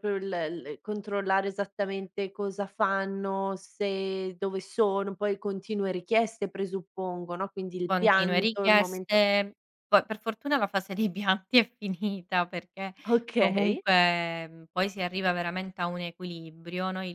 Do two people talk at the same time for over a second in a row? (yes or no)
yes